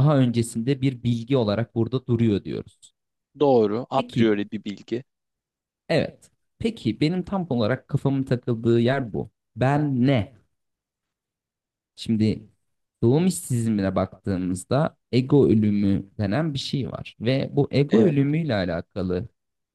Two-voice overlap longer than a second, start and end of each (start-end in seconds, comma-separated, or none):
none